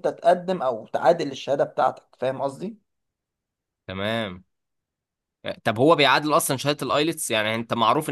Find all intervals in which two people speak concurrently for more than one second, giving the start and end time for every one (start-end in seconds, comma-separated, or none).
none